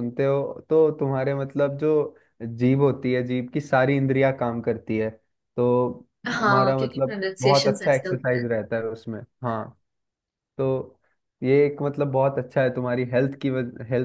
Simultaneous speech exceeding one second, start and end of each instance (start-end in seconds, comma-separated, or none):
6.4-8.4